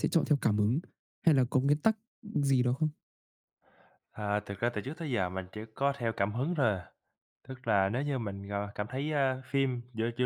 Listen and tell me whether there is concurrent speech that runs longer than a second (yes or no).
no